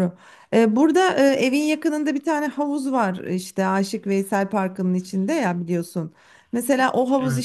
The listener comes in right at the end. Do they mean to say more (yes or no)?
no